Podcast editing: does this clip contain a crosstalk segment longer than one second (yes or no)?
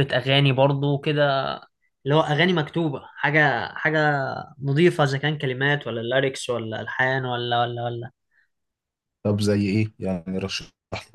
no